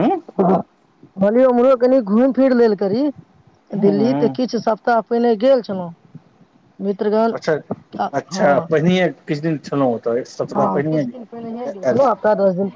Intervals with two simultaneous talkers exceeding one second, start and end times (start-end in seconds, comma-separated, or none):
10.6-12.0